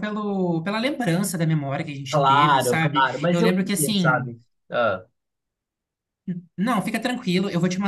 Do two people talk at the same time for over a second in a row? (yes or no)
yes